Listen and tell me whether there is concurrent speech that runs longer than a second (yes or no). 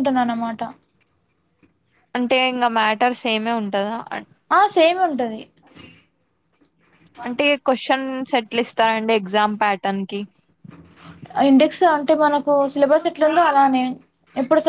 no